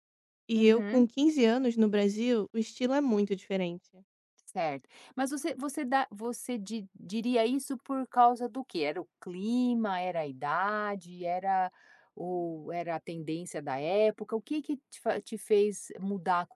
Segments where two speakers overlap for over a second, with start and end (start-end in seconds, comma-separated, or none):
none